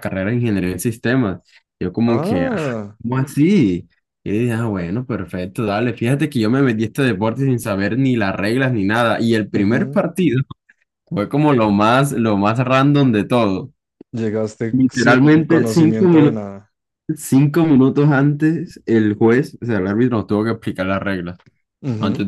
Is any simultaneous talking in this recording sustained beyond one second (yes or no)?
yes